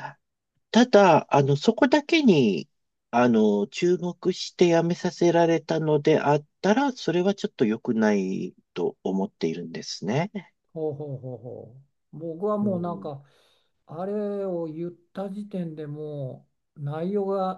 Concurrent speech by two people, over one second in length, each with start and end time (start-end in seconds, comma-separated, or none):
none